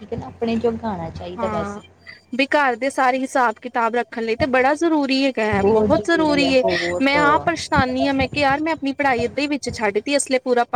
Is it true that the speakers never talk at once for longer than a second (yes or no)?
yes